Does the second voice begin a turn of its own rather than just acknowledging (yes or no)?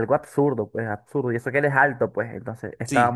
no